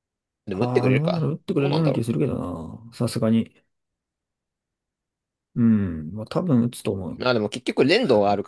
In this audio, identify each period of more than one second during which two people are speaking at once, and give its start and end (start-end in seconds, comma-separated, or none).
0.5-2.0